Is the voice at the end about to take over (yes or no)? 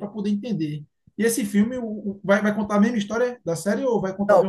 yes